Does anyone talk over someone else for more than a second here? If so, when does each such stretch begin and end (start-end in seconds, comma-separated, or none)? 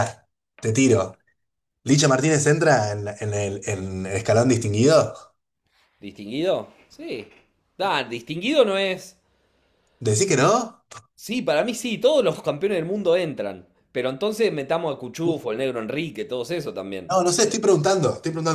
none